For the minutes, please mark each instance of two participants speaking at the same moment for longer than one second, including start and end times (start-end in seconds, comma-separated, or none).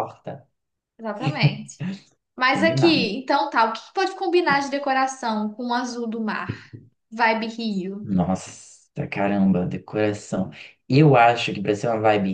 none